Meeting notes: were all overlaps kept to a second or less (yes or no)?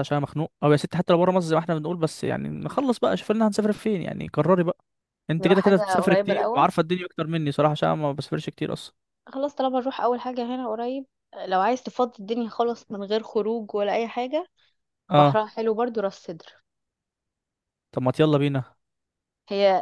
no